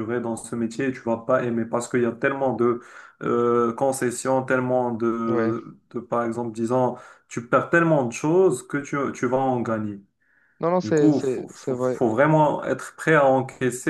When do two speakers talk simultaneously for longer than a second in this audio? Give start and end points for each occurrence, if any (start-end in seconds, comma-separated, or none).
10.8-12.0